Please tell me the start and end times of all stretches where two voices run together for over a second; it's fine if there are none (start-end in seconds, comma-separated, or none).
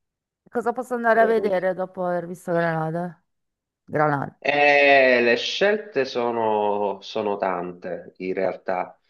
none